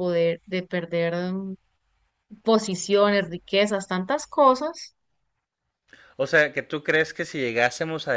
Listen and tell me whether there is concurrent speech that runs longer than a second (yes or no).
no